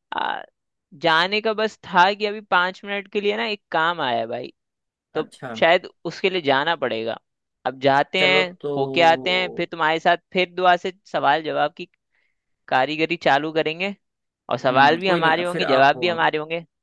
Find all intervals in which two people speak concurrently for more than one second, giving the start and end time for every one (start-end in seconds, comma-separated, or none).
14.7-16.2